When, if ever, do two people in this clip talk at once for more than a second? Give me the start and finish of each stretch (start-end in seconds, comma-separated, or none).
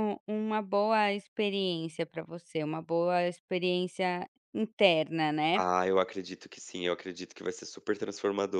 none